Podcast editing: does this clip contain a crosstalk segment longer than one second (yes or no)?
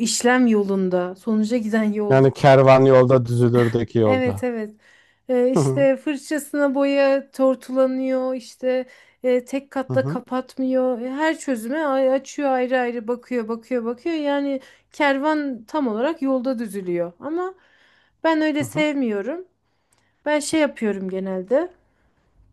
no